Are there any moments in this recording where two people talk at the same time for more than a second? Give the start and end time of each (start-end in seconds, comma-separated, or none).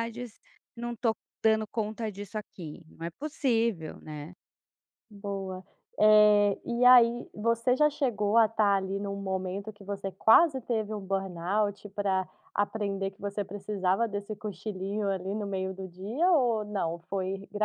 none